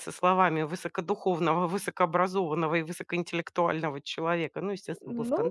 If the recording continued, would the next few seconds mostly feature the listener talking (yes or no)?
yes